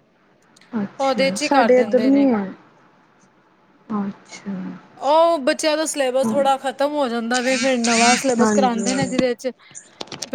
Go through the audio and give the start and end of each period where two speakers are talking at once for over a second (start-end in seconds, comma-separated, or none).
1.0-2.2